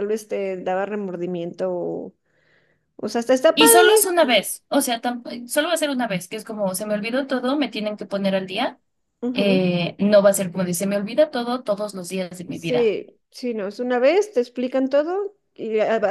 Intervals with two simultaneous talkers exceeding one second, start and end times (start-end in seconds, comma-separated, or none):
none